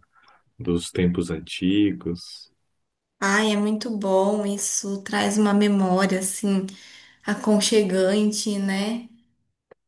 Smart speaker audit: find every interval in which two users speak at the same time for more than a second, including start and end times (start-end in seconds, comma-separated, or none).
none